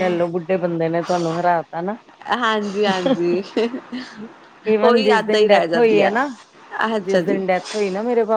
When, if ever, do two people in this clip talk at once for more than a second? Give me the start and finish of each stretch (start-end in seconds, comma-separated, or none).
4.8-6.1